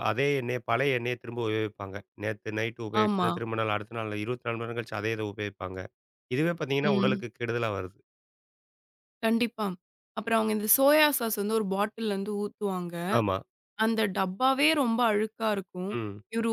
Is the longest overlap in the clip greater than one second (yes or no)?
no